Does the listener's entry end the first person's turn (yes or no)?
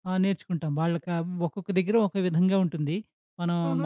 yes